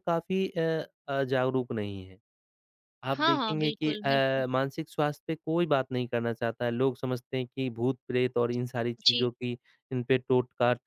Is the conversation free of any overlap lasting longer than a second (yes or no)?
no